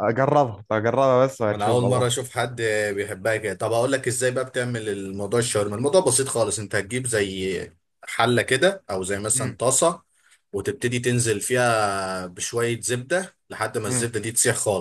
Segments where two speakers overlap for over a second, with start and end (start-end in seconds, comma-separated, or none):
none